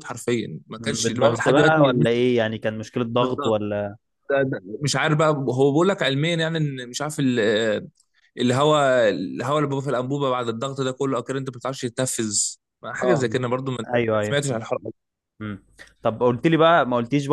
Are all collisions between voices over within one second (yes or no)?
no